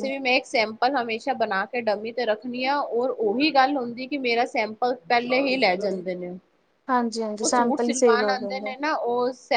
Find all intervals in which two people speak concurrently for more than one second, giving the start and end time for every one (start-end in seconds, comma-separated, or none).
7.4-8.7